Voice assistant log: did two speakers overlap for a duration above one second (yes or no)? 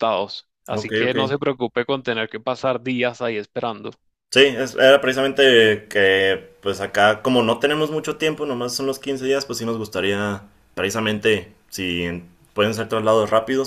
no